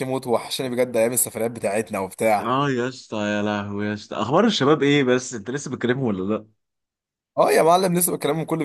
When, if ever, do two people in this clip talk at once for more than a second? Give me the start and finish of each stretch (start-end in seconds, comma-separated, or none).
none